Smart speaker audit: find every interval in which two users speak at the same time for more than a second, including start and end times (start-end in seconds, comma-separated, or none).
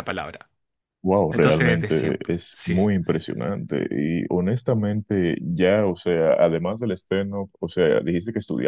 1.3-2.8